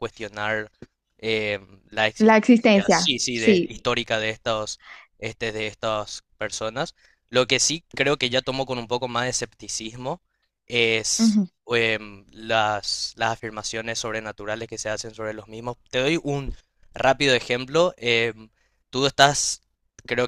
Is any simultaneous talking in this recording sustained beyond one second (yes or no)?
yes